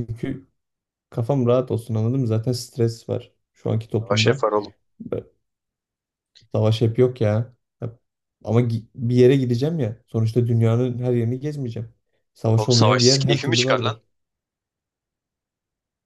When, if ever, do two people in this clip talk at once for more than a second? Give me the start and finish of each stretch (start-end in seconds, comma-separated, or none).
12.6-14.0